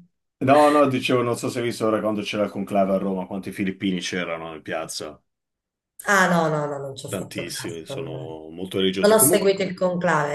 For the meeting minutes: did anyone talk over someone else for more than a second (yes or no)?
yes